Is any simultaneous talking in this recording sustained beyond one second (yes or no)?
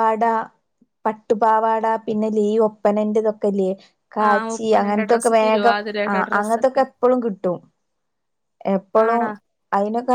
yes